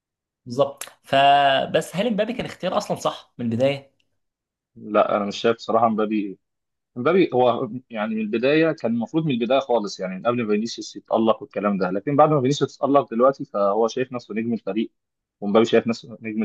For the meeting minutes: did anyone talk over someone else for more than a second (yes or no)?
no